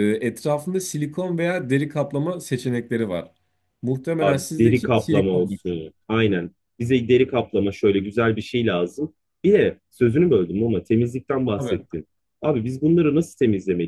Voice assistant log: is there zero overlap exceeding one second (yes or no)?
no